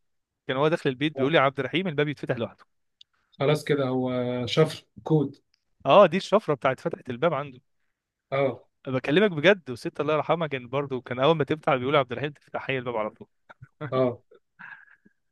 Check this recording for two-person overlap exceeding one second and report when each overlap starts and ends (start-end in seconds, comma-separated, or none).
none